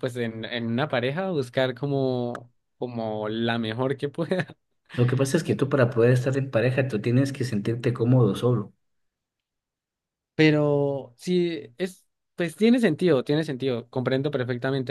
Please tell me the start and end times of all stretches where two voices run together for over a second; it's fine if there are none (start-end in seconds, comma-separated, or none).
none